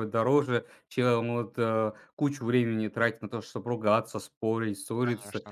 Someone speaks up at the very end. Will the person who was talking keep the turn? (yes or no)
yes